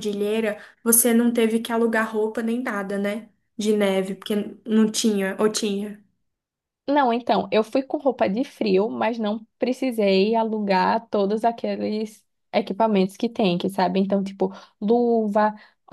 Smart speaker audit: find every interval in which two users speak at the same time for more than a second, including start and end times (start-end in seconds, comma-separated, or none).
none